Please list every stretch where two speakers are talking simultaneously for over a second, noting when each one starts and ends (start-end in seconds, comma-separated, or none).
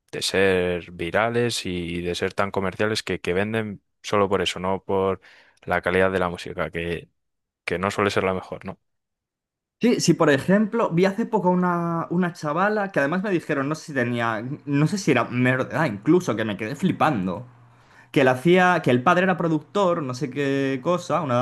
none